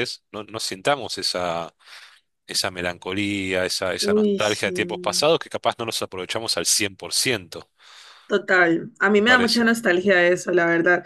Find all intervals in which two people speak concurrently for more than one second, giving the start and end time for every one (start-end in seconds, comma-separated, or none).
none